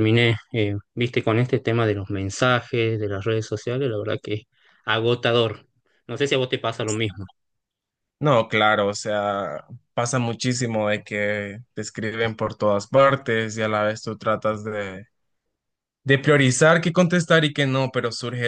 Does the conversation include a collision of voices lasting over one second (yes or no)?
no